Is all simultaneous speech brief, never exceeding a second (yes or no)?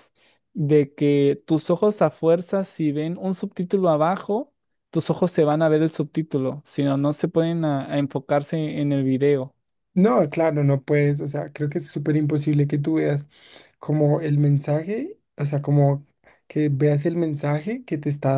yes